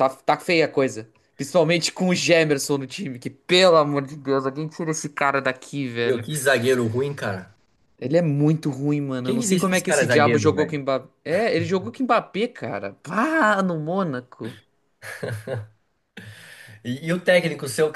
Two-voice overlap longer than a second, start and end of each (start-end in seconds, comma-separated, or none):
9.2-10.7